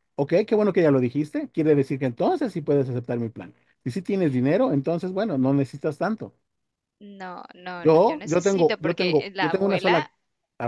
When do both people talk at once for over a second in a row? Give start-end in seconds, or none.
7.7-10.1